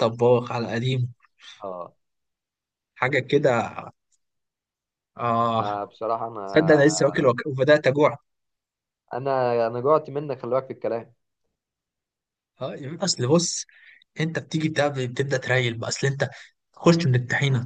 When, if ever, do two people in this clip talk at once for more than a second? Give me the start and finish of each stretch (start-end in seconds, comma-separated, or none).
none